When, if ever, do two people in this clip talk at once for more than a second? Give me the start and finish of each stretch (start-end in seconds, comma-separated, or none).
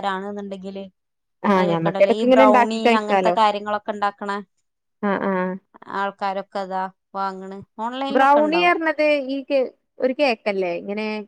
1.6-3.4